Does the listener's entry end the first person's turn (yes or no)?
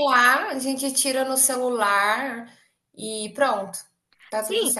yes